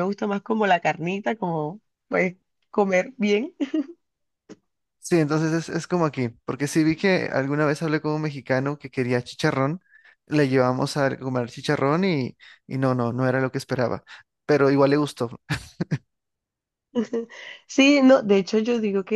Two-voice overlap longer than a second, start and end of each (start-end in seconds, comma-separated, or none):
none